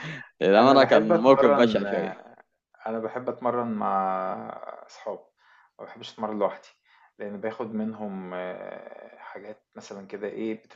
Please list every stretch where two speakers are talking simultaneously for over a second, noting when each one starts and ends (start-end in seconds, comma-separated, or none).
0.6-1.9